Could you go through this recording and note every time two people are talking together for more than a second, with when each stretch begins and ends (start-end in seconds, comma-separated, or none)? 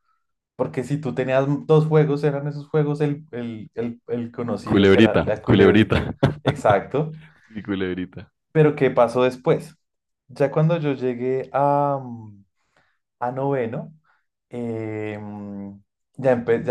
4.7-5.9